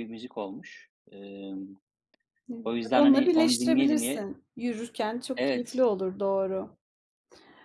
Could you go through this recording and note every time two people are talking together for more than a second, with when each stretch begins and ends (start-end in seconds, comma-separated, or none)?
2.6-4.3